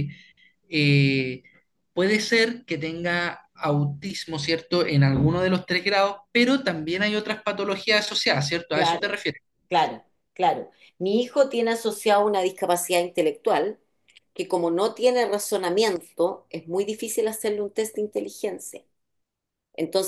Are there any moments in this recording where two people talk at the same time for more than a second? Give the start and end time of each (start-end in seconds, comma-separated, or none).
none